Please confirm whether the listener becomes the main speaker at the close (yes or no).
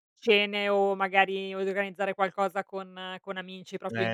yes